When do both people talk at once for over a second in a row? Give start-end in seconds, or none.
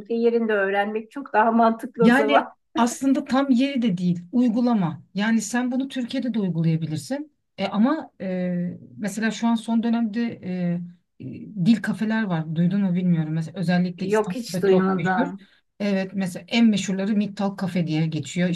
14.0-15.3